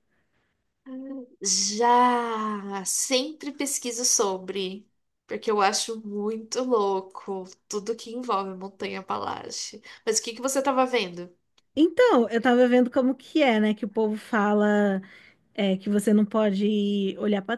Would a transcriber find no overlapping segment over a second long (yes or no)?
yes